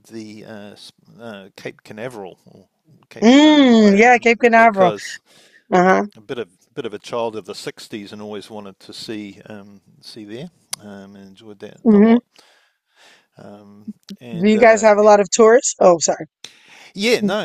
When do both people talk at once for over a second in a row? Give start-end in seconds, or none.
3.2-4.9